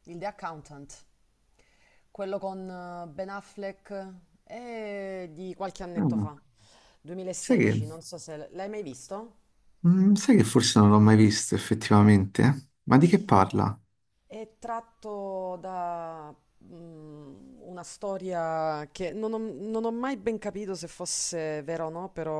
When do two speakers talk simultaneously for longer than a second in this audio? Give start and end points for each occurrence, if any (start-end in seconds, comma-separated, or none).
none